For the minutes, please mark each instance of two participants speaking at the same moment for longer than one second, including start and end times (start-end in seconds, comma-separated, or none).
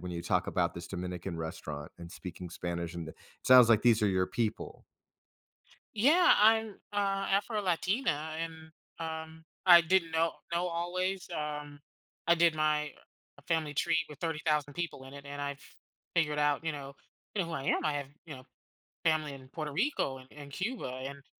none